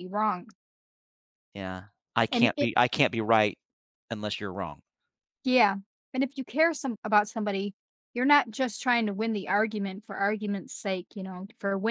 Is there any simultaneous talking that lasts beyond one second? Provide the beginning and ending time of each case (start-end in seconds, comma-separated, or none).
none